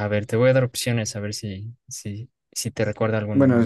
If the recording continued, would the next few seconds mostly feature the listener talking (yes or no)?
yes